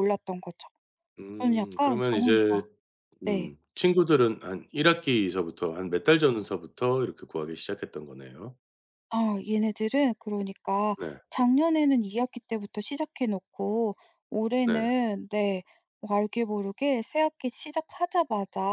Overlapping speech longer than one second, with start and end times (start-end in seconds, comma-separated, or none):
1.4-2.6